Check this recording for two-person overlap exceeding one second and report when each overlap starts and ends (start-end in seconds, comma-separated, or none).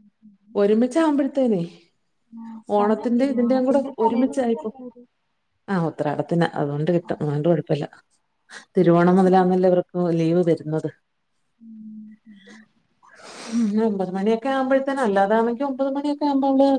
2.8-4.7